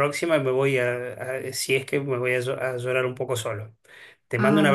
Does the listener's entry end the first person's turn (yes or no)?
no